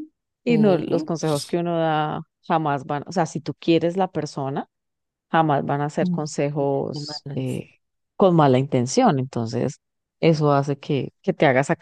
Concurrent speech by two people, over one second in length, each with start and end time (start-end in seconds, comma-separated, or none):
6.0-7.6